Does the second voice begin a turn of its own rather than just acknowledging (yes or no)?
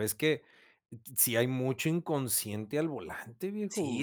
yes